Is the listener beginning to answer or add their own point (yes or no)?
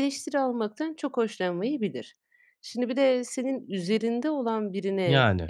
no